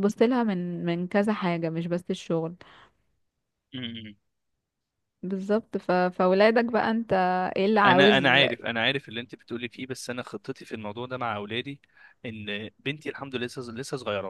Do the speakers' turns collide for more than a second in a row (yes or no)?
no